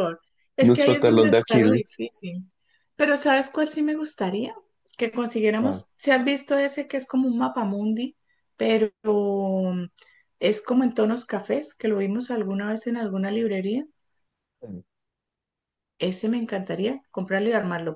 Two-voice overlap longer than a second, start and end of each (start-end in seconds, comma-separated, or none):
0.6-2.0